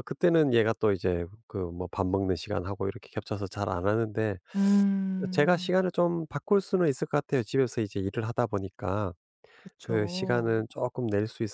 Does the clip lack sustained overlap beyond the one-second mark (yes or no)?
yes